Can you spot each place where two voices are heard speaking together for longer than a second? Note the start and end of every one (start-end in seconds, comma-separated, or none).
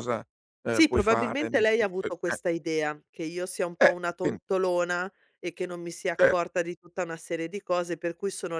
0.8-2.4